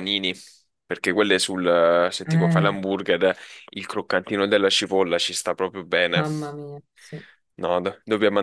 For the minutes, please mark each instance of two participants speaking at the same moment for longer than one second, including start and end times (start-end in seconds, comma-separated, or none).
none